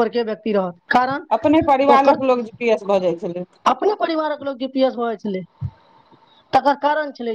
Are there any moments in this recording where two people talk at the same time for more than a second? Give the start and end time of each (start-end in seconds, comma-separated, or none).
none